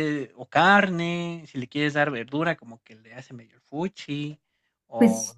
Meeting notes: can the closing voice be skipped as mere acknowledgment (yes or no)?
yes